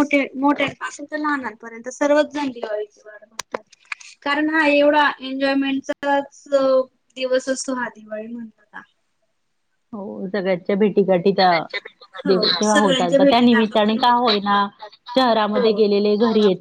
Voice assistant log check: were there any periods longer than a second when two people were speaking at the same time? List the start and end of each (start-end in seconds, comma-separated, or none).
12.3-14.6